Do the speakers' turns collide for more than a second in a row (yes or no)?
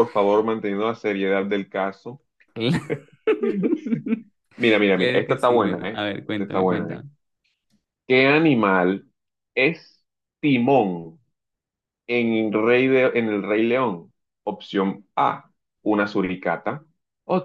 yes